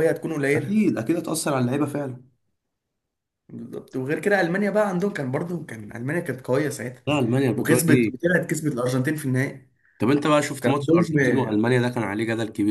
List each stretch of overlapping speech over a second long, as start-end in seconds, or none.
none